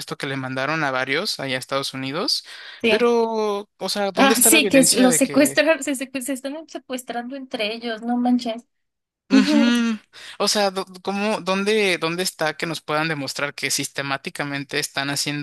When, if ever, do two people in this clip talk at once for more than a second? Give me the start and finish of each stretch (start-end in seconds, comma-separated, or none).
4.1-5.6